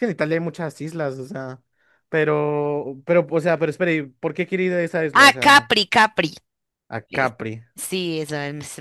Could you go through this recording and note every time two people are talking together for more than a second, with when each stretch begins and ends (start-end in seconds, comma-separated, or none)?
none